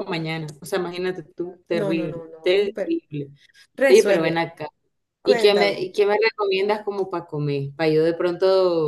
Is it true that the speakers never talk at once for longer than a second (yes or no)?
no